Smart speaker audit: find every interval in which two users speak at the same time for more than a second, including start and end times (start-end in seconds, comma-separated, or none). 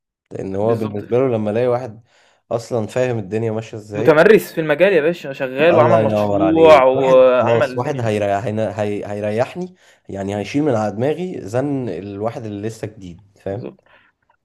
5.7-8.1